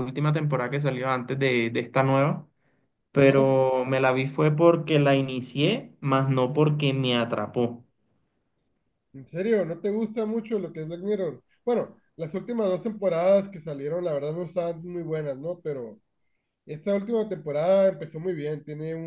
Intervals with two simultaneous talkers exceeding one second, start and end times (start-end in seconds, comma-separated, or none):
none